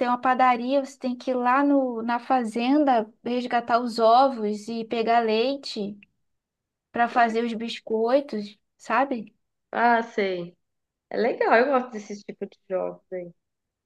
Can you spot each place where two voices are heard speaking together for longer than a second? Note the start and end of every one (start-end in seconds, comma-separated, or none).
none